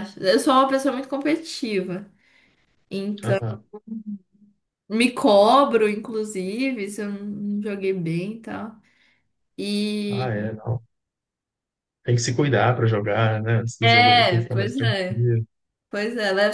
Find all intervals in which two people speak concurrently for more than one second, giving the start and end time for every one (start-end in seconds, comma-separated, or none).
13.8-15.3